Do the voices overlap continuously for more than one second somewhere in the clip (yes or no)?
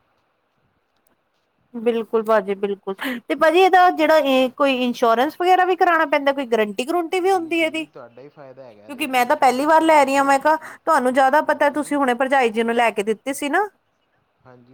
yes